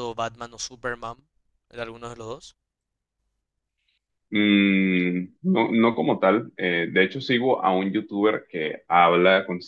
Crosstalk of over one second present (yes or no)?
no